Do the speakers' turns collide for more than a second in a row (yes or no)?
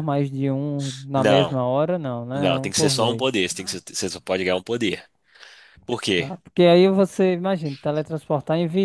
yes